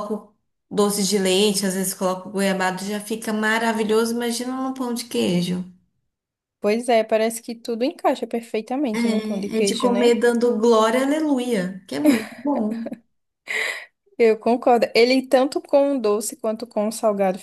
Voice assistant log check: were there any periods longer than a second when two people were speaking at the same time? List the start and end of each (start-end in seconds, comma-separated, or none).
9.0-10.2